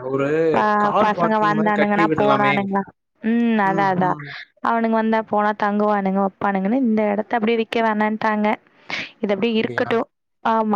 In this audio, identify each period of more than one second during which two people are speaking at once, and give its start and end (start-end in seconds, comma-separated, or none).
1.0-2.5